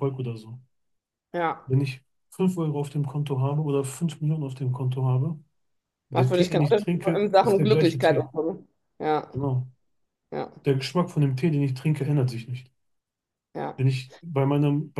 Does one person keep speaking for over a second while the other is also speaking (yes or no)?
yes